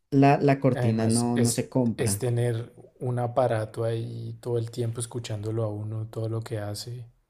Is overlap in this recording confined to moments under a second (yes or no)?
no